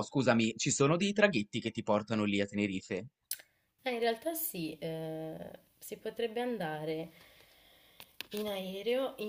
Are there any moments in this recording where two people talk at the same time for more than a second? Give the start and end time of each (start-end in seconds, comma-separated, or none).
none